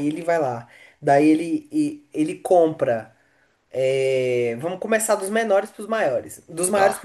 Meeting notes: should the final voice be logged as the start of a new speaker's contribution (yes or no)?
no